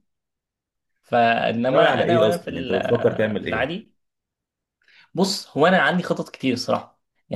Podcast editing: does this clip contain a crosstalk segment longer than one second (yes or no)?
yes